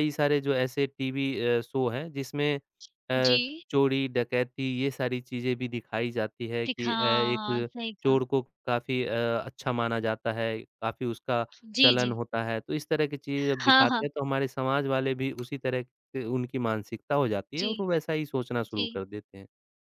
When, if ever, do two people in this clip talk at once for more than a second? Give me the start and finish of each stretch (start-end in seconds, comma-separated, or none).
6.7-8.2